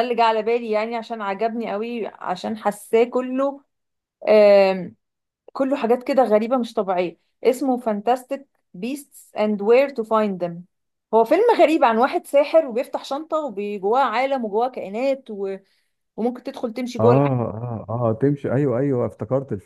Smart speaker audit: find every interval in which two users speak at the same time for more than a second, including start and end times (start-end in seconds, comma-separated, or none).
none